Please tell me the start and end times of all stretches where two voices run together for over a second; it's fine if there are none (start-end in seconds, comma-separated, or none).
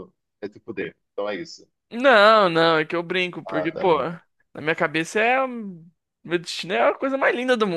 none